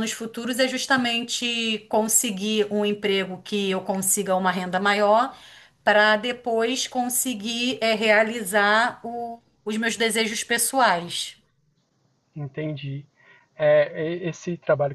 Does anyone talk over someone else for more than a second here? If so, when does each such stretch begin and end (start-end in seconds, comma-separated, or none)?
none